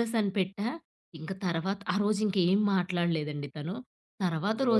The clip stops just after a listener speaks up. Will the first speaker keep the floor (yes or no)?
yes